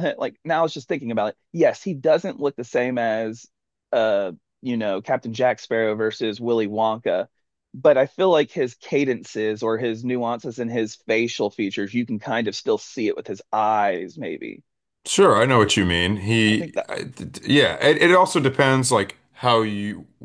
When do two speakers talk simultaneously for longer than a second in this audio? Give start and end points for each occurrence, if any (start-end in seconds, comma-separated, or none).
none